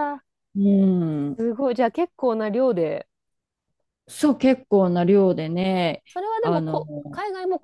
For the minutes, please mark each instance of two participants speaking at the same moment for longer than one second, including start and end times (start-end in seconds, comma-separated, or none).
none